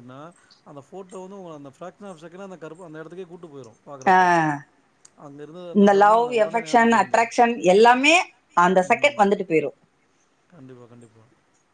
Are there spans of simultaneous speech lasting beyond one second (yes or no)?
yes